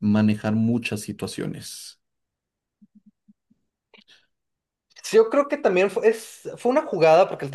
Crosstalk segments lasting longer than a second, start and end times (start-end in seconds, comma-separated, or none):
none